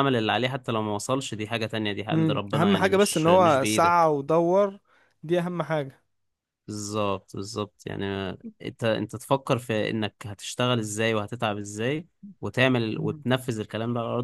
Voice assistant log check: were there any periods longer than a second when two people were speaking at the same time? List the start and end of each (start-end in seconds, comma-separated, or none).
2.1-4.1